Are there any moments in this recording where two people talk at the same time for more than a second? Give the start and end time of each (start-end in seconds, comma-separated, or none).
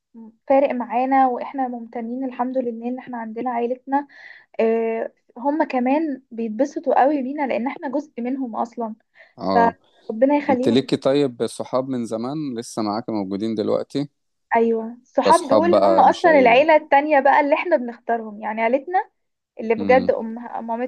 15.2-16.6